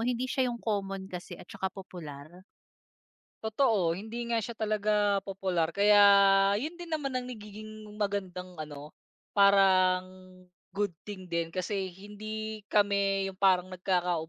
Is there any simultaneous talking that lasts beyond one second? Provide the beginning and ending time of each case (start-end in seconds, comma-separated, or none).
none